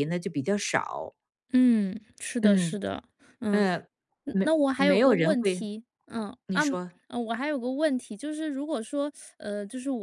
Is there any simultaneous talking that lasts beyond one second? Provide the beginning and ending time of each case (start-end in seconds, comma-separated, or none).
4.3-5.6